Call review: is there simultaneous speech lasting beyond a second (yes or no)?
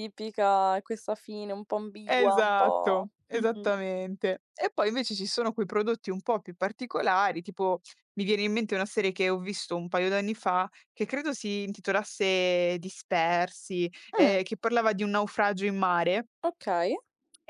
yes